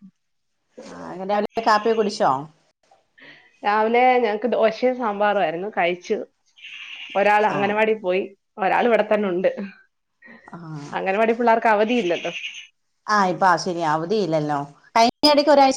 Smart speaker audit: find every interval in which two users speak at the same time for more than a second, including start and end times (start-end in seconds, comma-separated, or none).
none